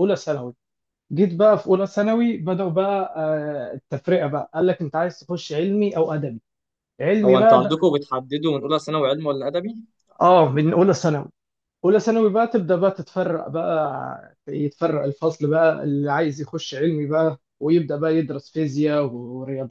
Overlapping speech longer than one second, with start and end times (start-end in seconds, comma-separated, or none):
none